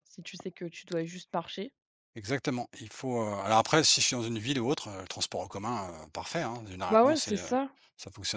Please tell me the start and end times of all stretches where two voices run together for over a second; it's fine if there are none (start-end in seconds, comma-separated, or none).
none